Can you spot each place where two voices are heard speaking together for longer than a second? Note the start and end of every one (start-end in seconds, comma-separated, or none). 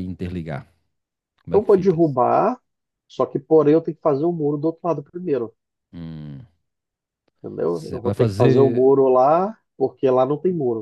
7.7-8.9